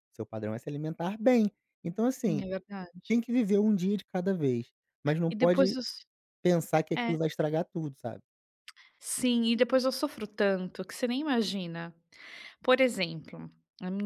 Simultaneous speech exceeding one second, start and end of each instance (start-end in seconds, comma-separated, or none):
none